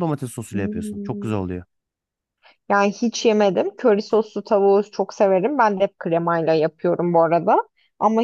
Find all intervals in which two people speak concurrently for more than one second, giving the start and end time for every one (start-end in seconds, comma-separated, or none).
none